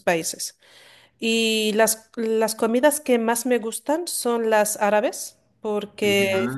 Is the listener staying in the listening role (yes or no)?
yes